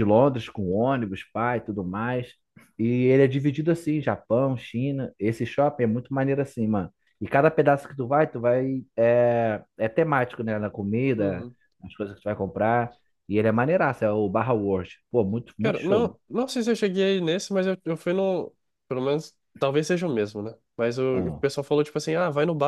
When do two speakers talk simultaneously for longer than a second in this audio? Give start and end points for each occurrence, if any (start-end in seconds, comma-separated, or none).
none